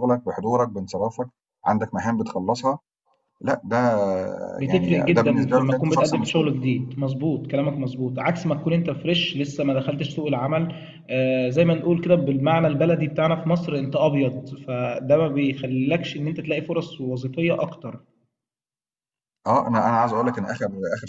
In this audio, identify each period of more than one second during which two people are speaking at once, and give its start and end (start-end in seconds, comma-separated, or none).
4.7-6.5